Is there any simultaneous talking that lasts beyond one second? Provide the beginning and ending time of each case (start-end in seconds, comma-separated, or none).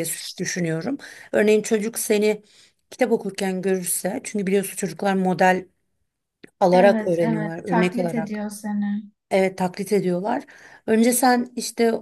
6.7-8.4